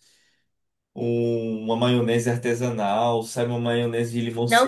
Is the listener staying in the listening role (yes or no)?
no